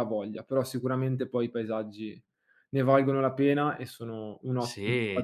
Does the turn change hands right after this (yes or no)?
yes